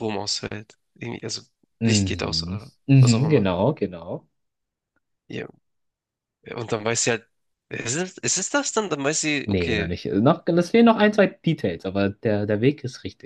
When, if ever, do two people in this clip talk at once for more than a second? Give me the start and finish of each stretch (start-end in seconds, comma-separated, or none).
1.8-3.5